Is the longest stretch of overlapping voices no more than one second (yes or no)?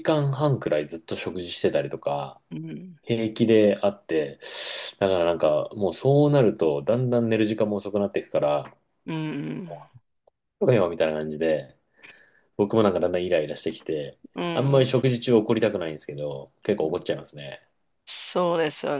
yes